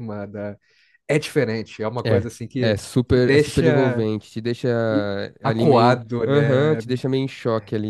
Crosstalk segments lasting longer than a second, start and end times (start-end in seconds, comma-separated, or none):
2.0-4.1, 5.4-6.8